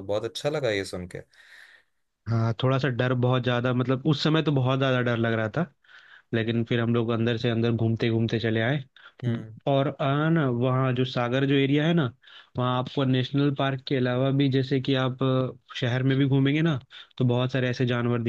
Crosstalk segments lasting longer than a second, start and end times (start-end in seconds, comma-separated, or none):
none